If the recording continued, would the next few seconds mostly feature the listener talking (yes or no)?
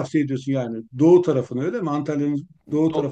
yes